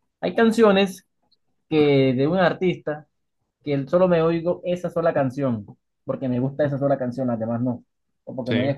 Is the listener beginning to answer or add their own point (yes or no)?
no